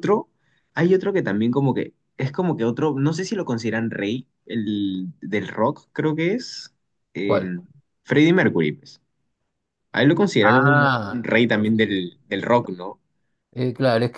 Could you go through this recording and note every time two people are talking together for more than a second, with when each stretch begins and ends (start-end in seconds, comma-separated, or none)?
10.4-12.0